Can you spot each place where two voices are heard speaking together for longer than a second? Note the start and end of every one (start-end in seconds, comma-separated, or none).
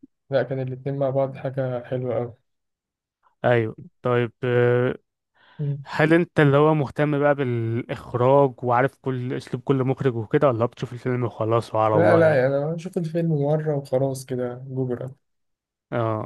none